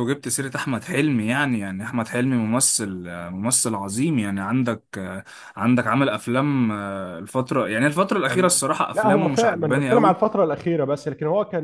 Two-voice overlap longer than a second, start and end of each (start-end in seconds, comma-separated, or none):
8.3-10.2